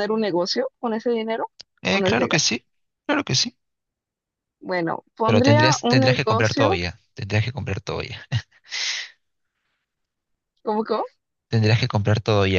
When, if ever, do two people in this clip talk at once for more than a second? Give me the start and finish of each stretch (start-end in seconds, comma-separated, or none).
5.2-6.8